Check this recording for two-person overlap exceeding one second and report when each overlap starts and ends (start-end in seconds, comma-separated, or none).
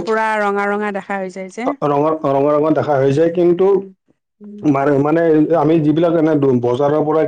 none